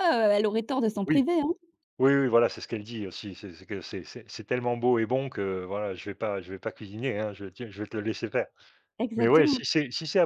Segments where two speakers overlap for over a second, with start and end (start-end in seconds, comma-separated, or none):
none